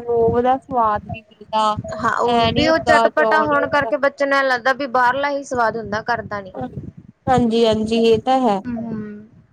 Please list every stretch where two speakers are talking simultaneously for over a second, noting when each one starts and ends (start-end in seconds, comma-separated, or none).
2.3-3.9